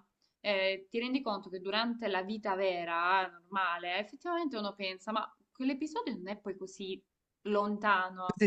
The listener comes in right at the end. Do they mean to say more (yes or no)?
yes